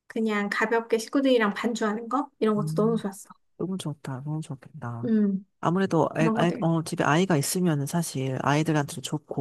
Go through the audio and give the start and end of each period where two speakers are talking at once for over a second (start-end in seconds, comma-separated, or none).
none